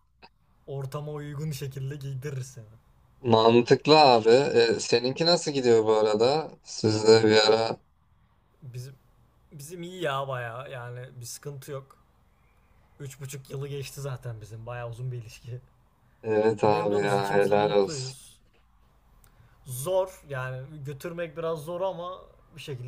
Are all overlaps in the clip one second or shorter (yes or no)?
no